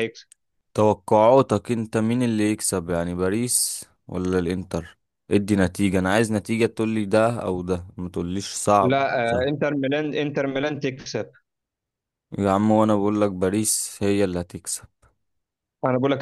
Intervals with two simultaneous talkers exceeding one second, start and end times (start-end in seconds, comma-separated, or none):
none